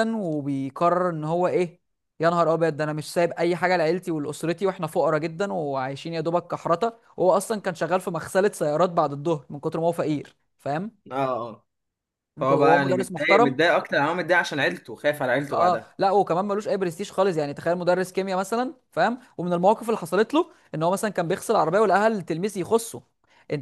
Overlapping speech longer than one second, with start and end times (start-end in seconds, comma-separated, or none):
12.4-13.6